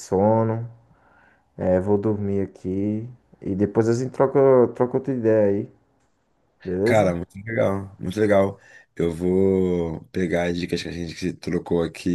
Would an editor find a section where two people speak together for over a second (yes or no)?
no